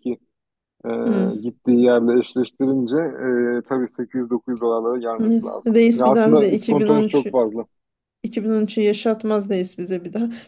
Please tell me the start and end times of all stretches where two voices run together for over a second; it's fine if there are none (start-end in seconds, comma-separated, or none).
5.2-7.4